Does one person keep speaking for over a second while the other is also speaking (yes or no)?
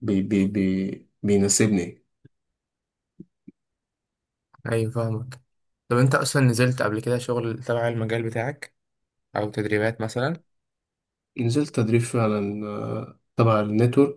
no